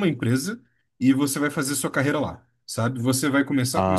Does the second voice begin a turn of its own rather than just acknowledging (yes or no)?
no